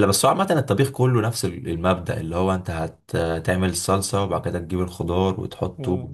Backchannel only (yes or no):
no